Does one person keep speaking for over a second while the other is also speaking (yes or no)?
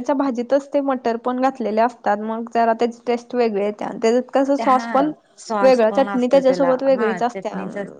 yes